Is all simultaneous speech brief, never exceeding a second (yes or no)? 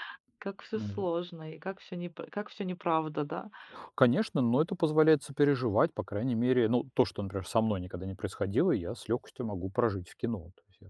yes